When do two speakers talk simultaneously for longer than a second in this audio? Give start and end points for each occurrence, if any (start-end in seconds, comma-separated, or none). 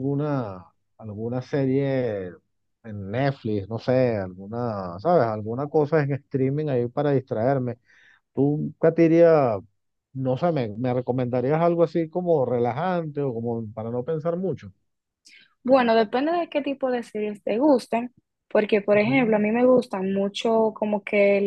none